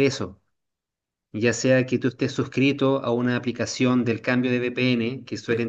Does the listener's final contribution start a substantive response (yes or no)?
no